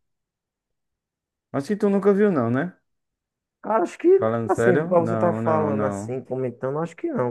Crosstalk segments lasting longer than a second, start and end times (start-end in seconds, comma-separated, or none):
4.1-6.2